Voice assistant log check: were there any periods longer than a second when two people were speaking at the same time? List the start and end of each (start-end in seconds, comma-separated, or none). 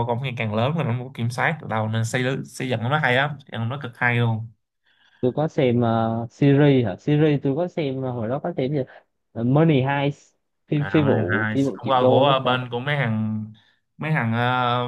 10.7-12.6